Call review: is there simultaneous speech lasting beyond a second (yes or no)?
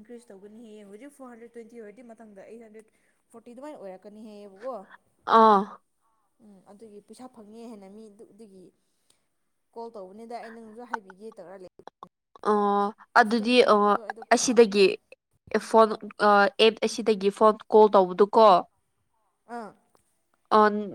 yes